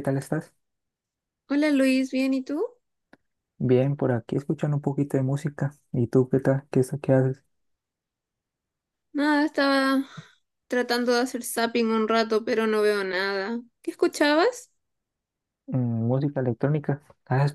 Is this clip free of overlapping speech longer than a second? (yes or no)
yes